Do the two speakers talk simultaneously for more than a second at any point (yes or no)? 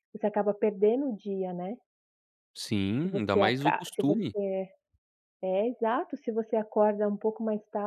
yes